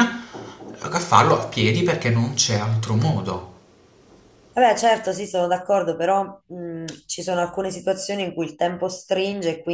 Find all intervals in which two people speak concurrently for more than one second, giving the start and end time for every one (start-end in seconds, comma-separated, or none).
none